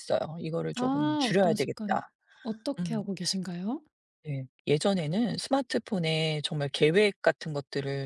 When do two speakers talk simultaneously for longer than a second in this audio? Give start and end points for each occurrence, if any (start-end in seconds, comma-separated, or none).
0.8-2.0